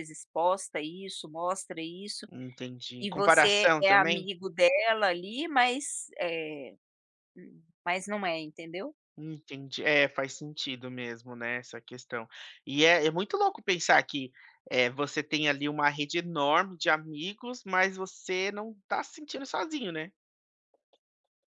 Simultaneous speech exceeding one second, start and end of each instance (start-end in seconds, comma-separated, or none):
3.0-4.3